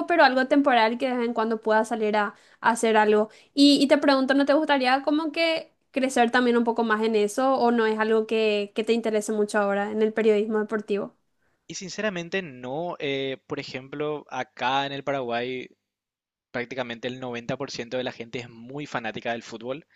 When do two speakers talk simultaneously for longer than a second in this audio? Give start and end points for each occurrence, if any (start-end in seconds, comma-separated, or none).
none